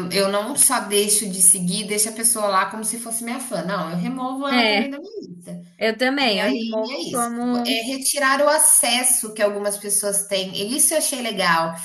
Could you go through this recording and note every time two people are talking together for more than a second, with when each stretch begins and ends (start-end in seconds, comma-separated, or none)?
6.2-7.9